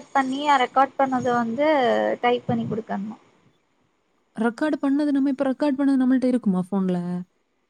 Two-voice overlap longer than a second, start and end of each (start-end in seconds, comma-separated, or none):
none